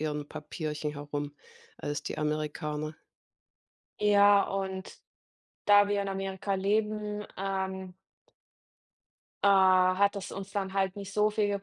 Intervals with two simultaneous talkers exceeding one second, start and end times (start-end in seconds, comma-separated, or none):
none